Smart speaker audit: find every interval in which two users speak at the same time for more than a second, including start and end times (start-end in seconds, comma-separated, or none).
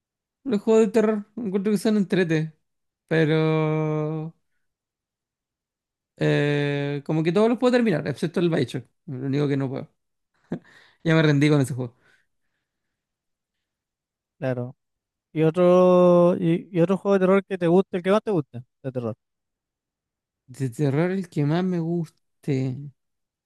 none